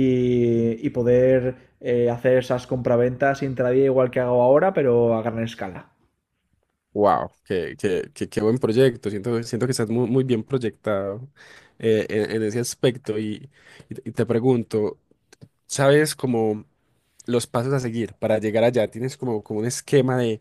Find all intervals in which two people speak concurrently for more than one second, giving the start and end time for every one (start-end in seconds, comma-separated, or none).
none